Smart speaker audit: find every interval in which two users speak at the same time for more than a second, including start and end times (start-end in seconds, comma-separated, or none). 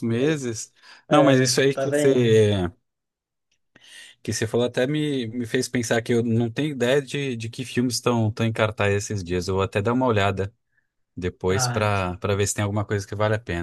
1.1-2.4